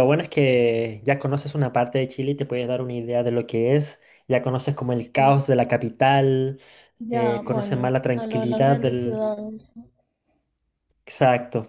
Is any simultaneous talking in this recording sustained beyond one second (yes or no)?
yes